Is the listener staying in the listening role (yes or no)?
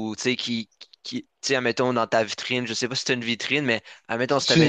yes